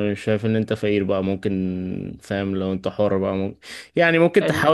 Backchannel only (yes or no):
yes